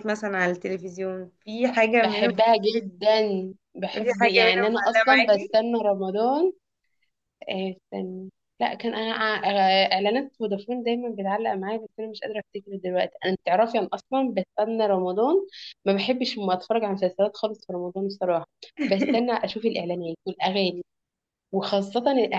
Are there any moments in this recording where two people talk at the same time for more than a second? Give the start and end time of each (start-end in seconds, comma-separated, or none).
3.9-5.5